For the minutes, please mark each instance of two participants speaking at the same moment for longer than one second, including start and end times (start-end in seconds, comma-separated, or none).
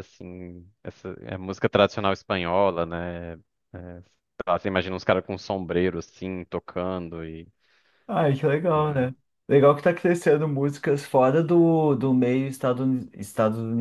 none